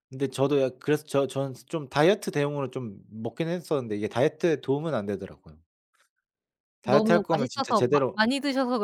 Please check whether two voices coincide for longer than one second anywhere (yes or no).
yes